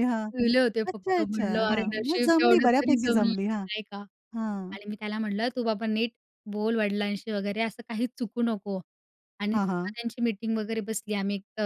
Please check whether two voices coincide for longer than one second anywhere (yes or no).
yes